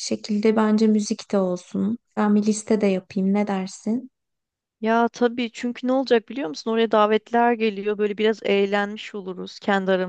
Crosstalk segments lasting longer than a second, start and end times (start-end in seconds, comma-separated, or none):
none